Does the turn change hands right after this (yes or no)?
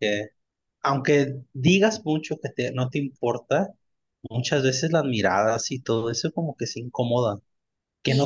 no